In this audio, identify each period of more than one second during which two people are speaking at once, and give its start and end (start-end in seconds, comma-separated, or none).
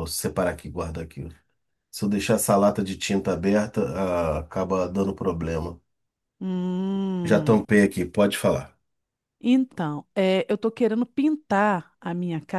none